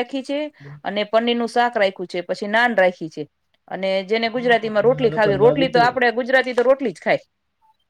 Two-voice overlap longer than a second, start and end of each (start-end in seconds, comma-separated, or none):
4.3-5.8